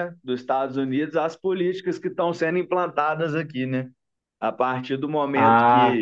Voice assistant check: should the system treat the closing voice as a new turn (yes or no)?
no